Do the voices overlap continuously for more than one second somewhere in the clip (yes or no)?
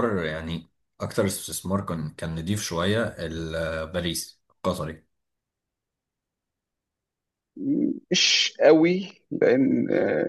no